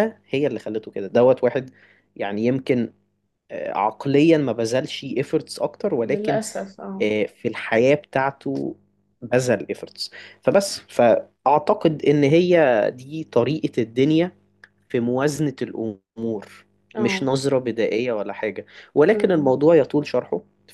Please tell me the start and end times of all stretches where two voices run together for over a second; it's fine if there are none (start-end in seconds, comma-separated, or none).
none